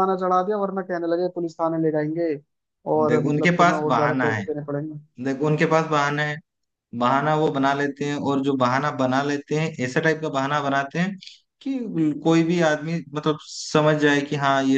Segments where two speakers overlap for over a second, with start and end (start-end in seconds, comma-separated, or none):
3.1-4.4